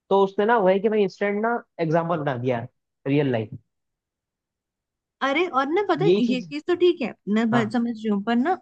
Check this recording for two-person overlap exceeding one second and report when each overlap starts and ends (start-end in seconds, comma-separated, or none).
none